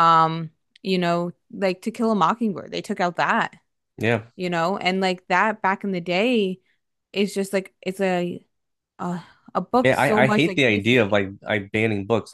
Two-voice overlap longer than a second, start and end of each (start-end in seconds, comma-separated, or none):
9.8-11.2